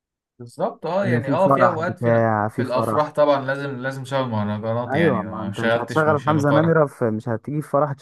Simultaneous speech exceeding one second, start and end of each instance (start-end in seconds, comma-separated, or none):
1.0-3.1, 4.9-6.7